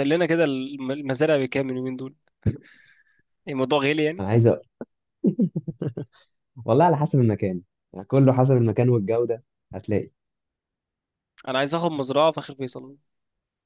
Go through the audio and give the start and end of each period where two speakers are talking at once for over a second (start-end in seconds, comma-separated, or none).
none